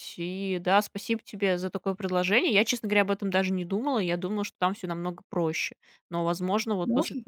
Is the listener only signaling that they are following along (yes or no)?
yes